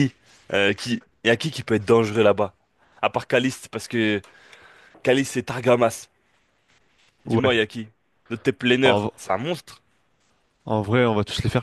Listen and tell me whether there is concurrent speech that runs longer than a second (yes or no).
no